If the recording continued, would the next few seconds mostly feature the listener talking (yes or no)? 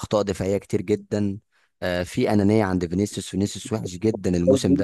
yes